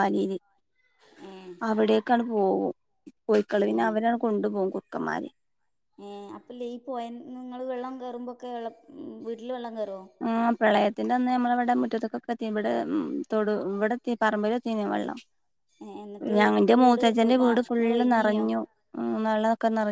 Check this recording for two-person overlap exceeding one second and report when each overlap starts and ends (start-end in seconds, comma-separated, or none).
16.8-18.4